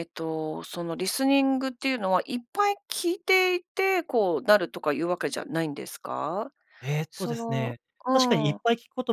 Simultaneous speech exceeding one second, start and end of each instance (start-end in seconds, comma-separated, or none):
7.1-8.6